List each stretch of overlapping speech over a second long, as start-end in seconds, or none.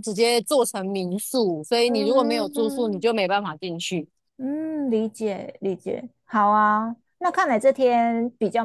1.9-3.1